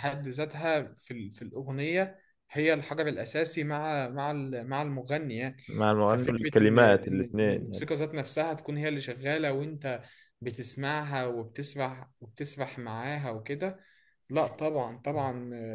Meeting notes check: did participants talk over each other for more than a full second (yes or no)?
yes